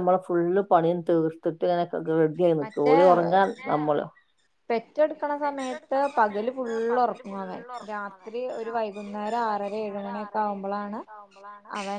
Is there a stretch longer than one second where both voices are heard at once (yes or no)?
yes